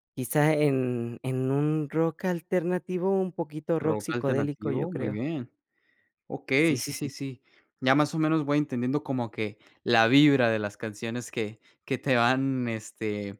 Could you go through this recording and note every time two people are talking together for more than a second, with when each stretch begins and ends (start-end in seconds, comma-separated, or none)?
3.8-5.2